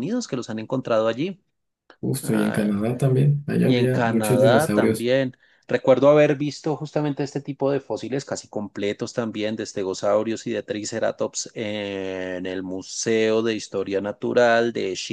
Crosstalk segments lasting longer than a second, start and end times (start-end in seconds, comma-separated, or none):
3.6-5.1